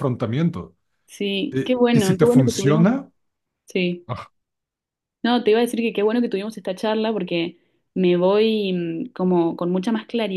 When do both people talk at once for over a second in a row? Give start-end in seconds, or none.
1.5-2.9